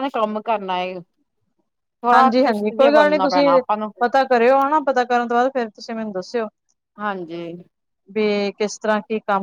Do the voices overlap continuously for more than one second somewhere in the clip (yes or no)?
yes